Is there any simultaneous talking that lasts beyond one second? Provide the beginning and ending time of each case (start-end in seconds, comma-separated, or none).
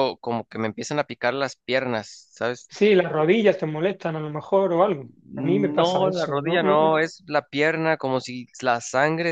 5.3-7.0